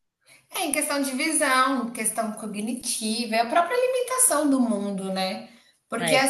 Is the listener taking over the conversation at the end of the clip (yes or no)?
no